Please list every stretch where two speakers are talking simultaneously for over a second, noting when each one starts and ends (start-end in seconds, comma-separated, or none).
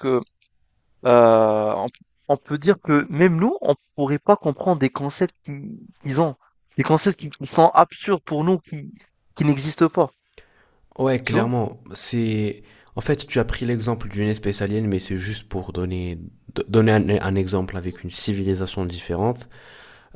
none